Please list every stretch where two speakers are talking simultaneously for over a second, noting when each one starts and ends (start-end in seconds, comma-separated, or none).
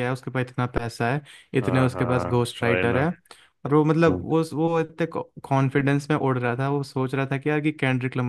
1.6-3.1